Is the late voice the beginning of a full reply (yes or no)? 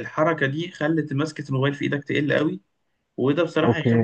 no